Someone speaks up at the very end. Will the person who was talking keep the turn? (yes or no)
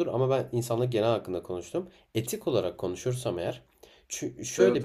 yes